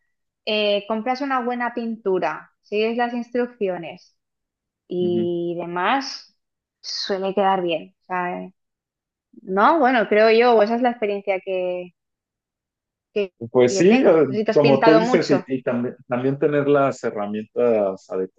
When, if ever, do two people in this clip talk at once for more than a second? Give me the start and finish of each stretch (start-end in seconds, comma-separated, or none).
13.7-15.3